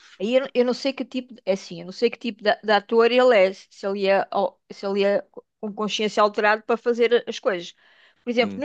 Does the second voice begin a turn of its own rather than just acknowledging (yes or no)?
no